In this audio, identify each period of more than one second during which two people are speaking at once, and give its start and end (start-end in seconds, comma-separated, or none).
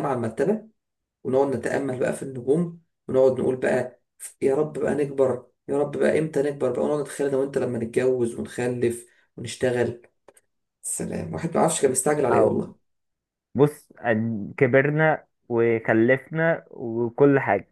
none